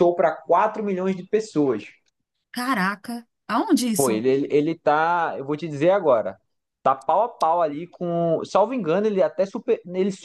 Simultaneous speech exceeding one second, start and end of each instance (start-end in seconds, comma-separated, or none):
none